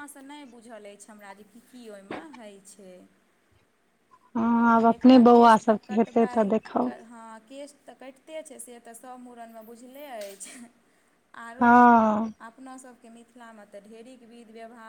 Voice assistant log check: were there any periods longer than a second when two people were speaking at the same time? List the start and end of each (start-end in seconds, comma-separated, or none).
4.7-6.5